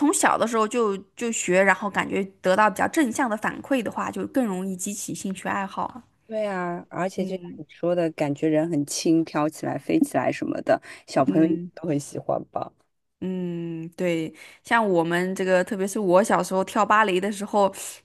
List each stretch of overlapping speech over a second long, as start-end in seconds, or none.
none